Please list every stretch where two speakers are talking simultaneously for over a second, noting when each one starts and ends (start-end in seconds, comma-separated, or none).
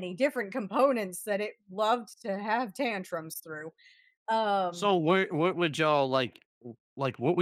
none